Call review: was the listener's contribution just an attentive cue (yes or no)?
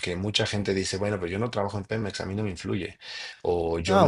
no